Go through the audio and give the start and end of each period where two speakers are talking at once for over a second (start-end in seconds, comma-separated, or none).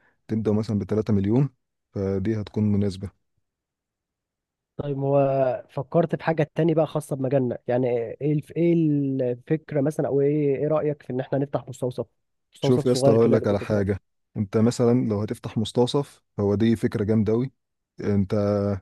12.6-14.0